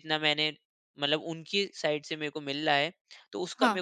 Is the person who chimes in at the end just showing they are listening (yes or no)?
yes